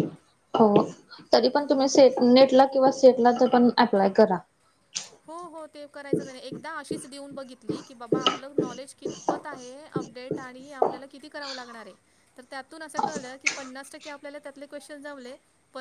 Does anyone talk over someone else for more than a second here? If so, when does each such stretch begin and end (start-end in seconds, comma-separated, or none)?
none